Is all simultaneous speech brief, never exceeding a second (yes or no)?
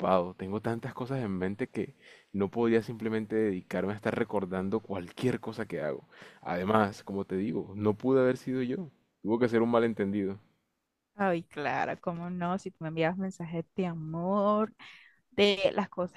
yes